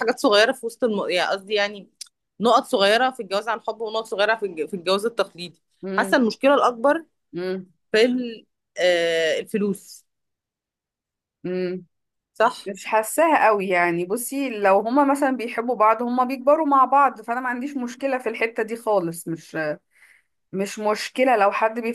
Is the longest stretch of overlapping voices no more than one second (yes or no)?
yes